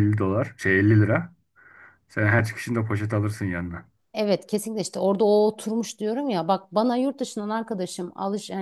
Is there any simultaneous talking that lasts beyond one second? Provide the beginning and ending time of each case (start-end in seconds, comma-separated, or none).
none